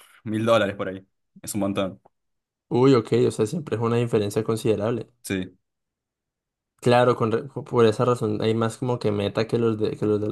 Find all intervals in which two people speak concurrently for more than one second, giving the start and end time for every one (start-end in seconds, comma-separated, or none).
none